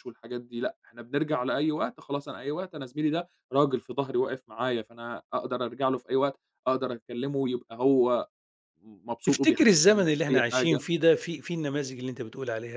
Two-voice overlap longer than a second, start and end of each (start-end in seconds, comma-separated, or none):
9.2-10.8